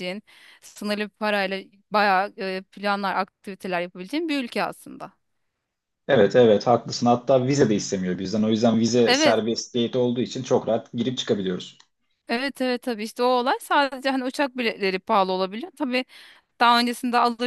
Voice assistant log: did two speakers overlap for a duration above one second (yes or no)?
no